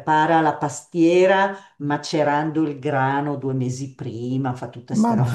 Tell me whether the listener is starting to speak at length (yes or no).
no